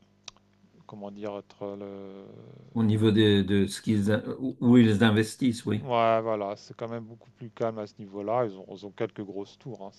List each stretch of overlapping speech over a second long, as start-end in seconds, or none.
none